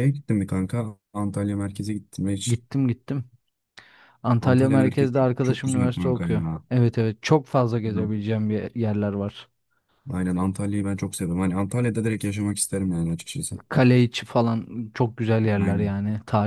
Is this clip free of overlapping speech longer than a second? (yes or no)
no